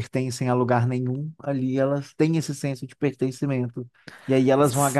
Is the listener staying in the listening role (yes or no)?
yes